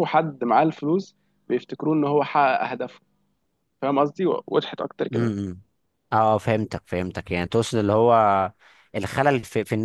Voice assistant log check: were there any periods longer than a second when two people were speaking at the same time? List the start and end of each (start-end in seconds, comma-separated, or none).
none